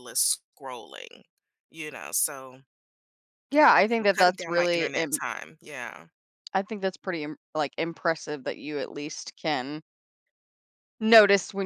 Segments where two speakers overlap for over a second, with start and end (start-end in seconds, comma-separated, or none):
3.9-5.2